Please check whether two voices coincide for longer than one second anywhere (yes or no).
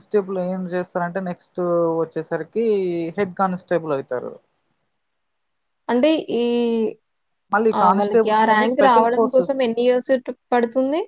yes